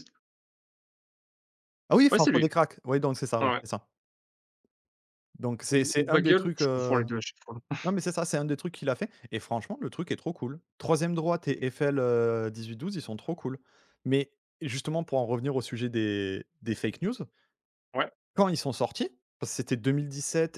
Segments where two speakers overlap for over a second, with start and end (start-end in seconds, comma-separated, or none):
5.7-7.0